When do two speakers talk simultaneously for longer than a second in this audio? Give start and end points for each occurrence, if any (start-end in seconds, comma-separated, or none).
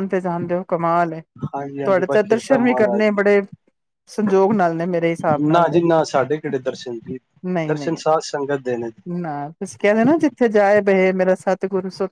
1.8-3.2